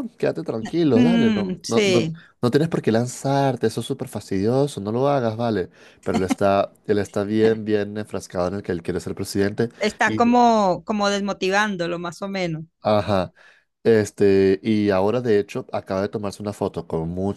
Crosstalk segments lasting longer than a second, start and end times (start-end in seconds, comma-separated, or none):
0.9-2.2